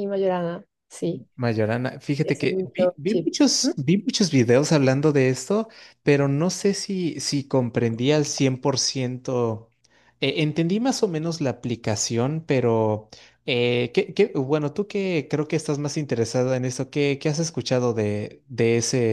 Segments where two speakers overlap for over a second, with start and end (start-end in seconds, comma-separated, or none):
2.2-3.8